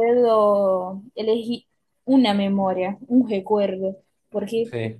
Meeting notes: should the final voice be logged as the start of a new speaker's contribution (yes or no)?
no